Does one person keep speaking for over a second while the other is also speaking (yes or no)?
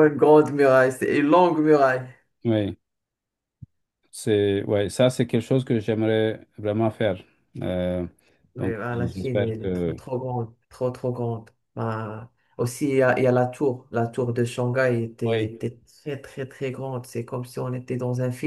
yes